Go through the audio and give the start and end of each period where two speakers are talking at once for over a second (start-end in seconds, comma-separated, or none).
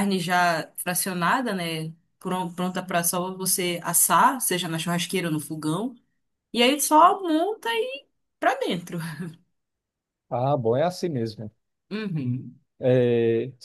none